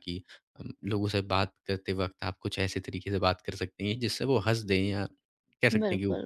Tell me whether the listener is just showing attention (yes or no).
no